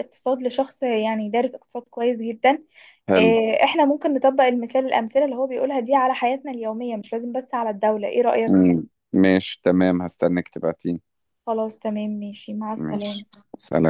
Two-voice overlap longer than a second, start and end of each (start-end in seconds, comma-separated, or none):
none